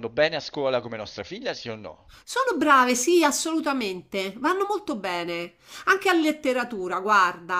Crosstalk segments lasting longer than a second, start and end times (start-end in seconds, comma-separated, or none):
none